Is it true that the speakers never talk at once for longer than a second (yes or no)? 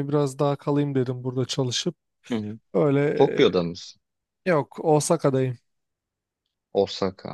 yes